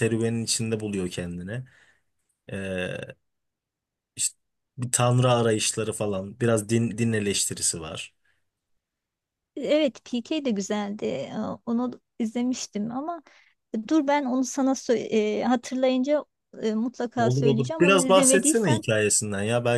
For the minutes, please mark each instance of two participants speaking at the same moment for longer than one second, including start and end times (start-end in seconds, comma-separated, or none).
17.2-18.8